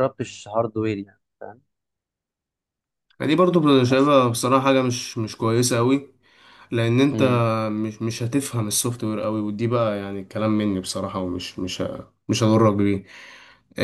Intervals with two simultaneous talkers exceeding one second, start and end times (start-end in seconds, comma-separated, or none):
none